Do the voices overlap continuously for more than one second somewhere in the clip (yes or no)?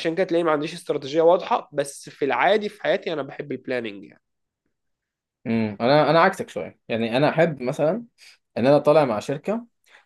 no